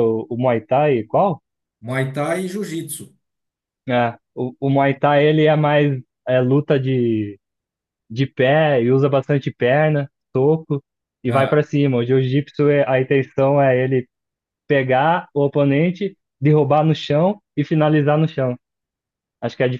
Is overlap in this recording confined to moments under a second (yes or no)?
yes